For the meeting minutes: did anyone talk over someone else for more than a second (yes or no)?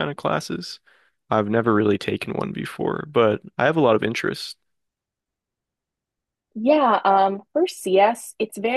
no